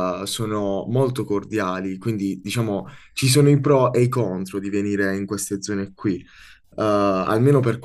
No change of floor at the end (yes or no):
yes